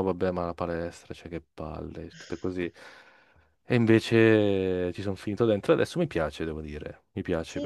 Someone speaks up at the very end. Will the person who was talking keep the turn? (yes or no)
no